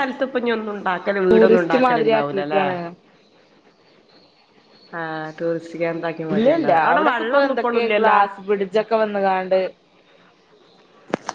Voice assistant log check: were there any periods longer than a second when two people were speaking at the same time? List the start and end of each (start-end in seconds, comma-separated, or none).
1.3-2.6, 6.3-8.2